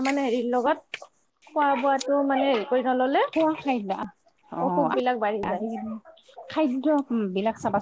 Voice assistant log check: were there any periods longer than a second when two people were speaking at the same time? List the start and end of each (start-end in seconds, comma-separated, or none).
none